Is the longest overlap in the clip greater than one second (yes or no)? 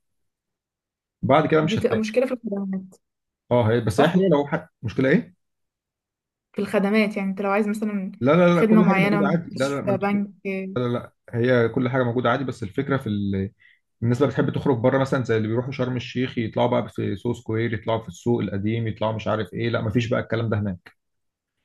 yes